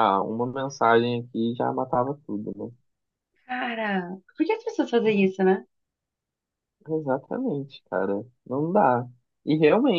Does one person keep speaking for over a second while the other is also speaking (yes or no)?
no